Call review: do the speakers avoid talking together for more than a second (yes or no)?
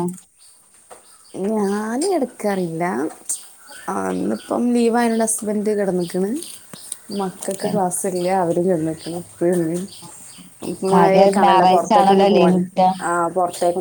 no